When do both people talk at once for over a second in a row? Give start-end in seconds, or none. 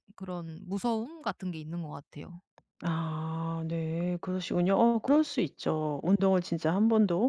none